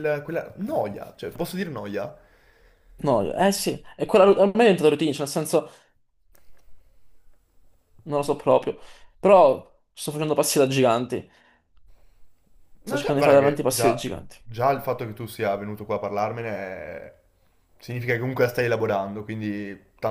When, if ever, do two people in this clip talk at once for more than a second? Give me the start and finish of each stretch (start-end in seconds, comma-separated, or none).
12.8-14.1